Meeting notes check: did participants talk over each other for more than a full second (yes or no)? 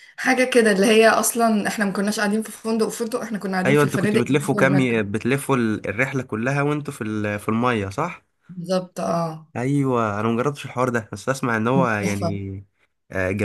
yes